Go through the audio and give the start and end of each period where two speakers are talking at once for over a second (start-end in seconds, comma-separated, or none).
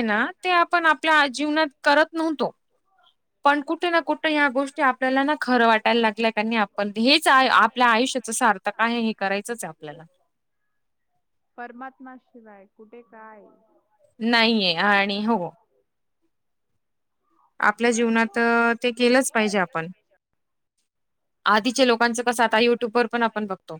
none